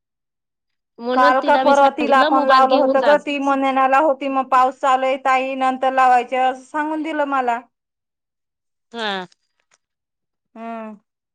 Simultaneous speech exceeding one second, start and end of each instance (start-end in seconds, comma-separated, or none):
1.1-3.1